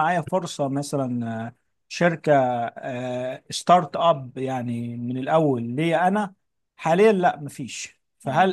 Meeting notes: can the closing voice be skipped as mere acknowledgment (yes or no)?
yes